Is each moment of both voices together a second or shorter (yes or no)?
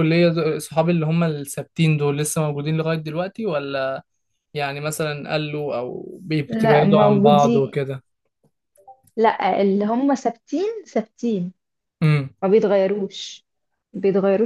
no